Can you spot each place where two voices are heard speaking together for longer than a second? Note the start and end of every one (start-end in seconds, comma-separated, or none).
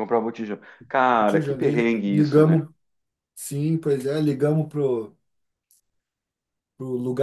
1.1-2.6